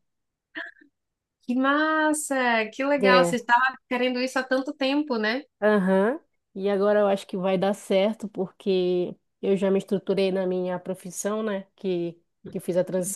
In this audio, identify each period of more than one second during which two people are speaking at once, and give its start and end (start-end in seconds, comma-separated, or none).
none